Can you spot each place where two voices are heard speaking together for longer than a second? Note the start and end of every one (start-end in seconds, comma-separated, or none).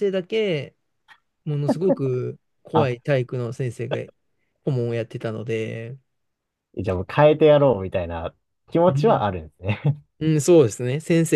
none